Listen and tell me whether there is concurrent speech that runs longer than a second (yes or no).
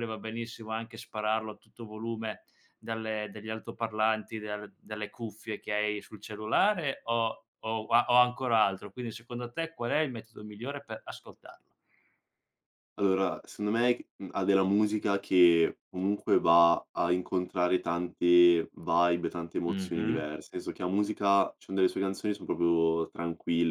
no